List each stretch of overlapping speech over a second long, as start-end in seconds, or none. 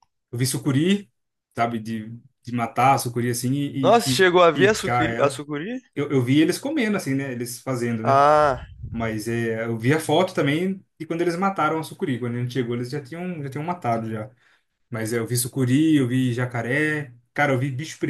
3.8-5.4